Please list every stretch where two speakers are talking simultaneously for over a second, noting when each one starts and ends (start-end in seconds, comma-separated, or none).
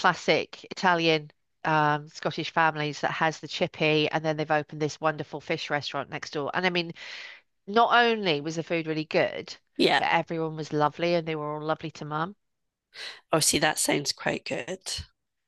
none